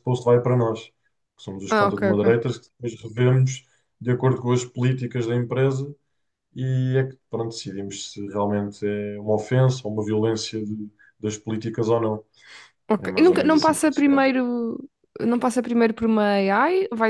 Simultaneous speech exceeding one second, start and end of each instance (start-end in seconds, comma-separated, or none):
13.0-14.3